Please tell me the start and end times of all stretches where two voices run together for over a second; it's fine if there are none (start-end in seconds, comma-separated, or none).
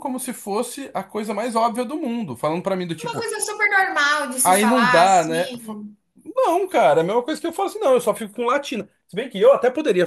4.4-5.8